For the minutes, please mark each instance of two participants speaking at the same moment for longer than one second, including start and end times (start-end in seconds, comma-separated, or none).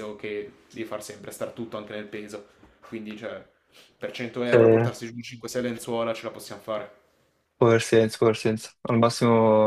none